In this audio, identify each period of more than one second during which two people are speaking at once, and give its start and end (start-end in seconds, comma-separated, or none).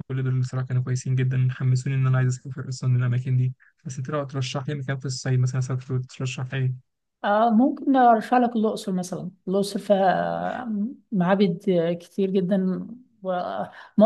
none